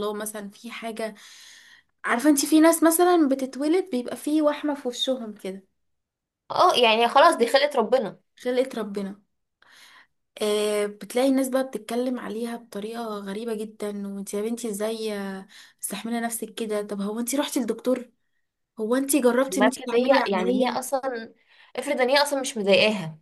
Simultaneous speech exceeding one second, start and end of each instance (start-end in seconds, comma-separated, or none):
19.5-20.9